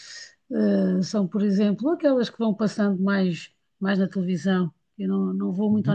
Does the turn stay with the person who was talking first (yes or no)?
yes